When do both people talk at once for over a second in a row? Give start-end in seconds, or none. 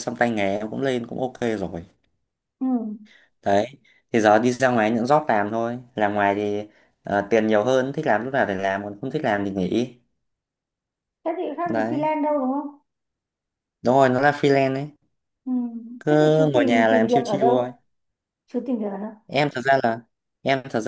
16.1-17.5